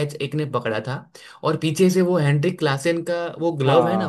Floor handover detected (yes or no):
yes